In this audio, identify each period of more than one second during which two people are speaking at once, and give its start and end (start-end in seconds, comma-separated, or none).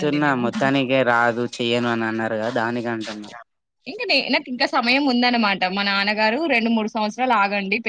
none